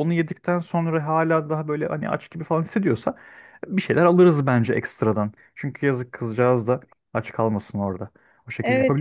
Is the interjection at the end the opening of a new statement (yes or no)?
yes